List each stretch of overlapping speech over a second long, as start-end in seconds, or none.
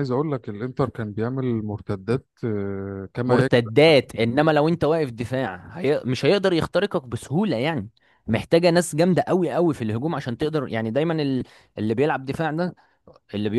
none